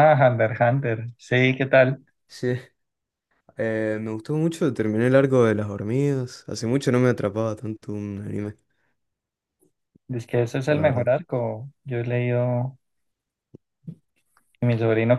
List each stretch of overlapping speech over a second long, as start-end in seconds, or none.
none